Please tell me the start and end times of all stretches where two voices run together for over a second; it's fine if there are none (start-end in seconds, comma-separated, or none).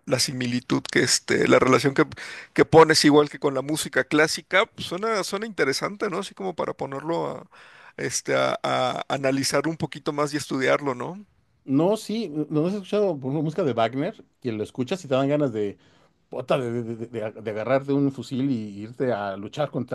none